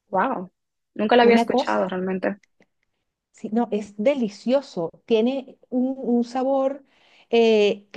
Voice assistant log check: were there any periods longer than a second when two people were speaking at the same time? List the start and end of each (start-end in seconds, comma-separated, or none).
none